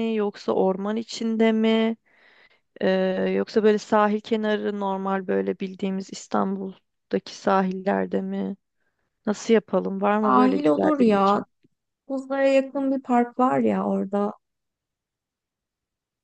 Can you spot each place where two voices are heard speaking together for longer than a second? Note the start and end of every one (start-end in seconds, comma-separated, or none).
10.2-11.4